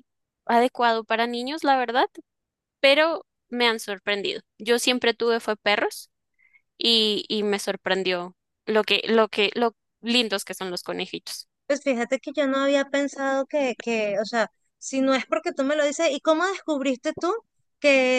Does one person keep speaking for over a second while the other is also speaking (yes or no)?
no